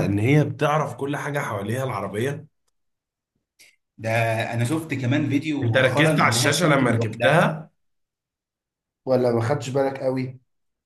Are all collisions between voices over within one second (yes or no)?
no